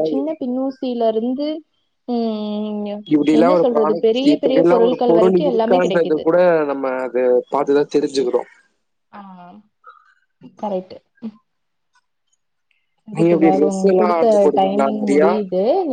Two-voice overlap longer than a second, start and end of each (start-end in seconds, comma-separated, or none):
3.4-6.2, 13.2-15.3